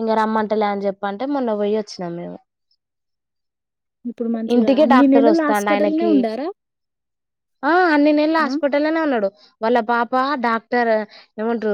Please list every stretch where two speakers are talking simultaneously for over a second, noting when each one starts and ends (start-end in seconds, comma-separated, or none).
4.5-6.1